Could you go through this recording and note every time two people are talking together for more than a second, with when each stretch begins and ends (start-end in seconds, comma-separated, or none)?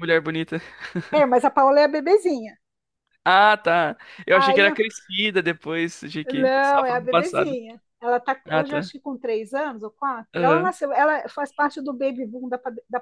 6.2-7.6